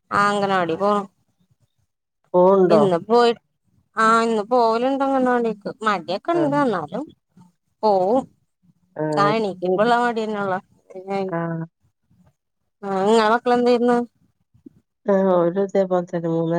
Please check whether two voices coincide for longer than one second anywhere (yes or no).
no